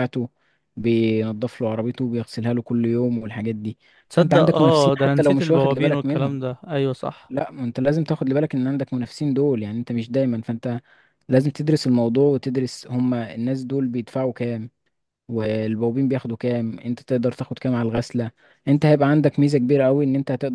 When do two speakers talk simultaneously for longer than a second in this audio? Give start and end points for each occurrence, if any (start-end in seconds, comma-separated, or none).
4.1-6.4